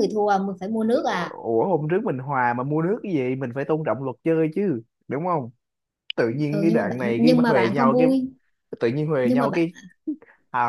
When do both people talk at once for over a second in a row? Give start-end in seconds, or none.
6.3-8.1